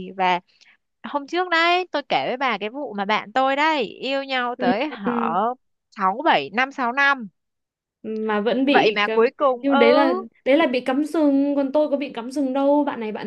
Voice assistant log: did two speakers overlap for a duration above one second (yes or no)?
yes